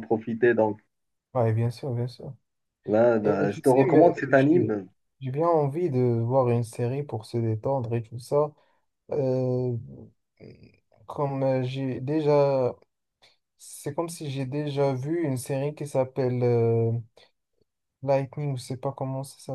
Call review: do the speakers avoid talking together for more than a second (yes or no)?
no